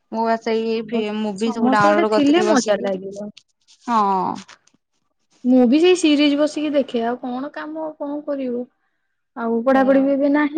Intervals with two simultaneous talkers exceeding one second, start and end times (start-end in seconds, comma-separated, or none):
1.4-2.9